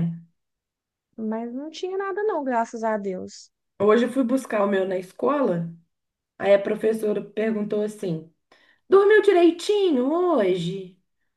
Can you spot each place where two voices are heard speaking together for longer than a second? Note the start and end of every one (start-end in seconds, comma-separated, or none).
none